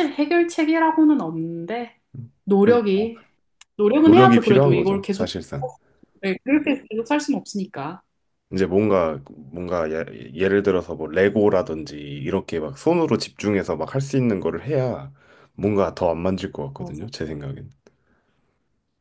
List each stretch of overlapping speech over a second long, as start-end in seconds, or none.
4.0-5.3